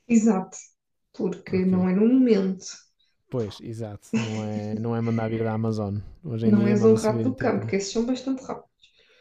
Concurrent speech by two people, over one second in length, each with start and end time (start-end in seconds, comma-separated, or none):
6.5-7.7